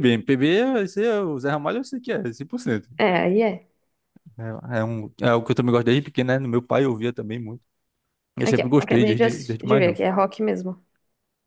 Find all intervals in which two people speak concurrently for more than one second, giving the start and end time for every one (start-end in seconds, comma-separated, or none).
8.4-10.0